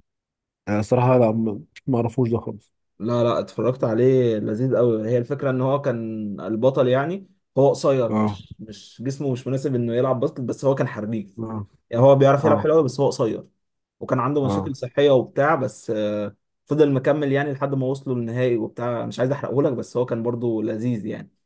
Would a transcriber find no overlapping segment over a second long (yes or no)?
yes